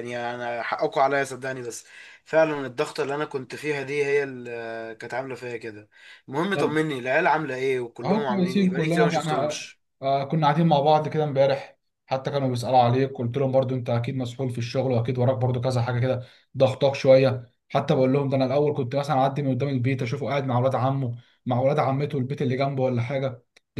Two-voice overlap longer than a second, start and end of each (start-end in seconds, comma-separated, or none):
8.0-9.6